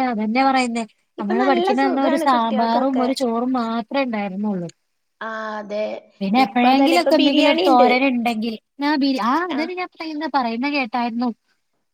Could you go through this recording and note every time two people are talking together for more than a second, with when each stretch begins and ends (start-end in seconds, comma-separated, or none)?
1.2-3.1, 6.5-7.9